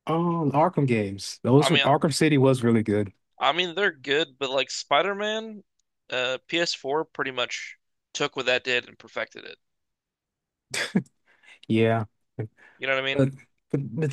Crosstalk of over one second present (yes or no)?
no